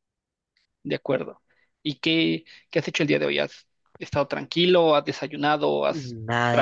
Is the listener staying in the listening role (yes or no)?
no